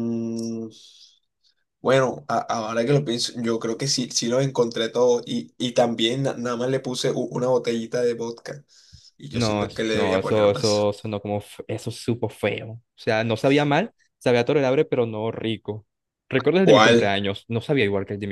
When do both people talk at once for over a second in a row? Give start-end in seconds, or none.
9.3-10.9